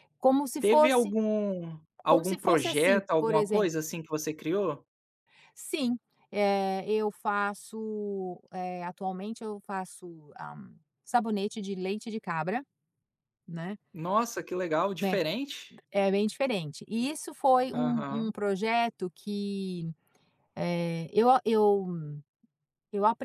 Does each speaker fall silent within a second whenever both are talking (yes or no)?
no